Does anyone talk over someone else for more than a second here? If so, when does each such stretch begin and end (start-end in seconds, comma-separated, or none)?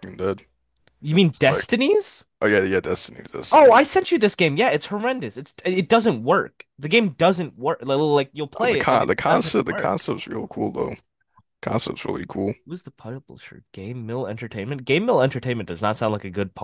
8.6-10.0